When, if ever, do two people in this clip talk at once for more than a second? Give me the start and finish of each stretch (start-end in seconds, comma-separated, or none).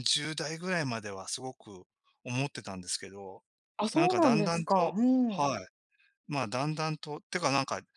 3.9-5.5